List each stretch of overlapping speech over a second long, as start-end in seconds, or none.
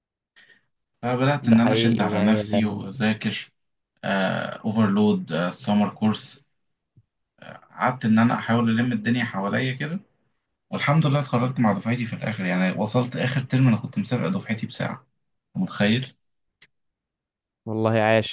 1.4-2.8